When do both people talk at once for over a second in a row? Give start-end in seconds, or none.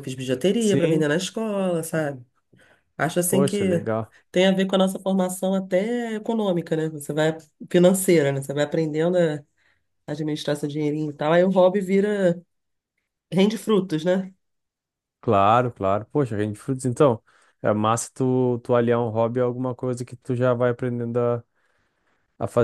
none